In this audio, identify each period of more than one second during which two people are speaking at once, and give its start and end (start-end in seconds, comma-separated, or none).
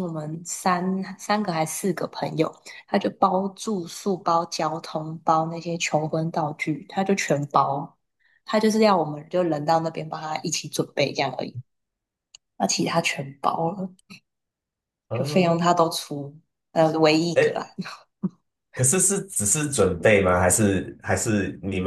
none